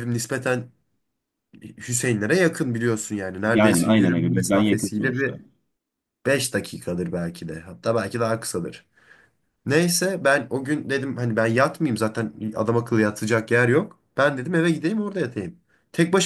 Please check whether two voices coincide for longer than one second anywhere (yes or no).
yes